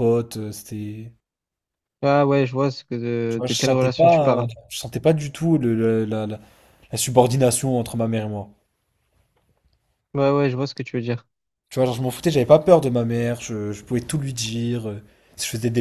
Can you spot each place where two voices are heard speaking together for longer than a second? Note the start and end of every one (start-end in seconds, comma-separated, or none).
3.3-4.5